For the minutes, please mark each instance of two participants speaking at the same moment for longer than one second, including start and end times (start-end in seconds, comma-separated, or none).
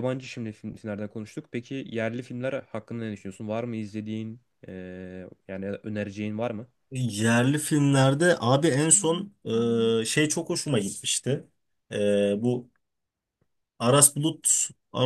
none